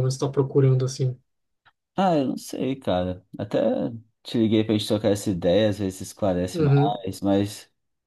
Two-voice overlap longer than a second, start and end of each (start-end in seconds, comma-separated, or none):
none